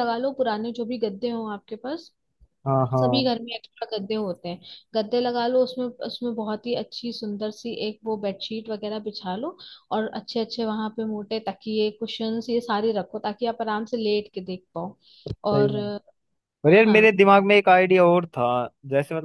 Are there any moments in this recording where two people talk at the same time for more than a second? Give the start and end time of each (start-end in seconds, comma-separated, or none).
none